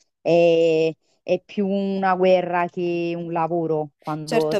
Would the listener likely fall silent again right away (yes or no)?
no